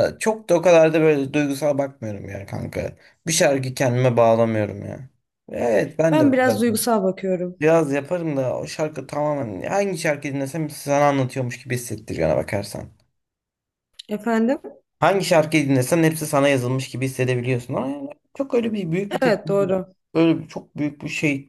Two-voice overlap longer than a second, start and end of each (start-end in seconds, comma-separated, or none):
none